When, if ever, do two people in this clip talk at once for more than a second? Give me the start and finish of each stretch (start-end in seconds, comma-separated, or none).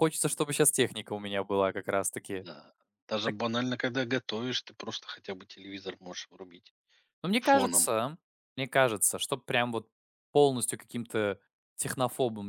none